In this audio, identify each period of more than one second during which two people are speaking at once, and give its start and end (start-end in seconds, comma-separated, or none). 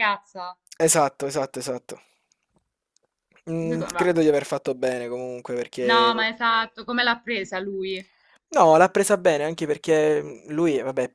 none